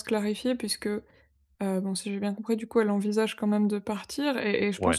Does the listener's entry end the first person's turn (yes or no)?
no